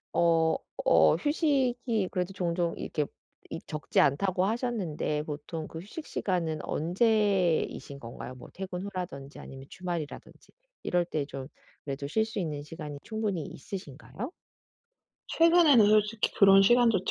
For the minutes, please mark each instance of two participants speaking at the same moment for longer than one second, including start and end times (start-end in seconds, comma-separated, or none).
none